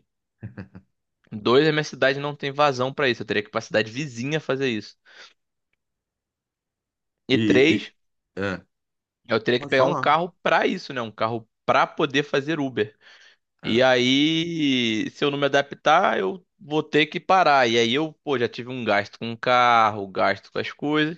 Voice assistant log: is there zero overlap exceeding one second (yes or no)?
yes